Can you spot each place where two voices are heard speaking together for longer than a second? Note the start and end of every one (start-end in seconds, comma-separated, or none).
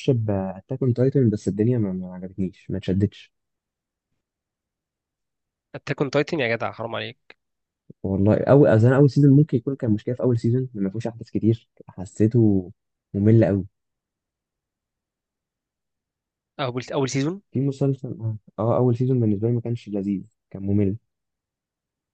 none